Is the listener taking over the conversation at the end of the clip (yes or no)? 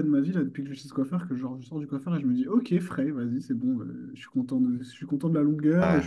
no